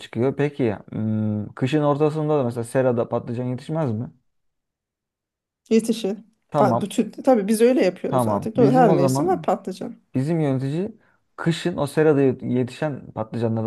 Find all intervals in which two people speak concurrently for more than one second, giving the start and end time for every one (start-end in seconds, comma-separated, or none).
8.1-9.5